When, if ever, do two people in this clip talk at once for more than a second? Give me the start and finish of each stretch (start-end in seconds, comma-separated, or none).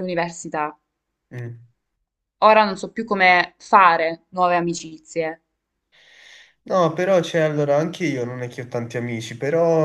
none